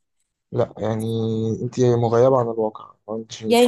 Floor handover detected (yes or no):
yes